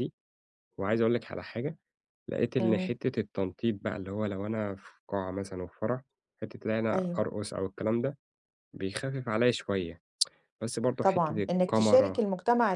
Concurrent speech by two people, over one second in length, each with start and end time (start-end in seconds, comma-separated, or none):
11.0-12.2